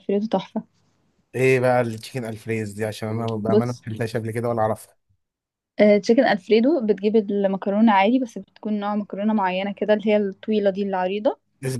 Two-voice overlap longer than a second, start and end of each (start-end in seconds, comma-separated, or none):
none